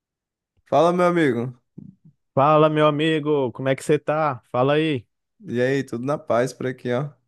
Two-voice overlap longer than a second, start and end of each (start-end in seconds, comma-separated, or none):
none